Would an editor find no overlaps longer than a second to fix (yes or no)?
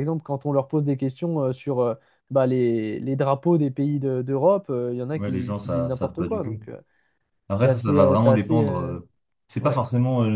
no